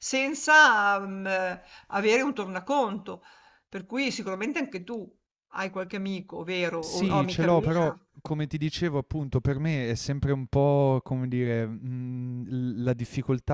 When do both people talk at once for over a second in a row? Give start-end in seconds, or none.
6.8-8.0